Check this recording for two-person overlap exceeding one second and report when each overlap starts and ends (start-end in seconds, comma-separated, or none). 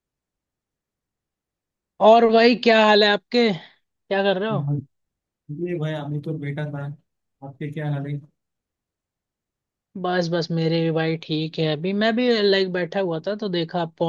none